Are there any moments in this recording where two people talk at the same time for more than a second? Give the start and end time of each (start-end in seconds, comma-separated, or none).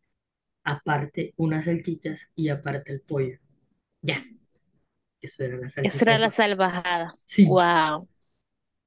none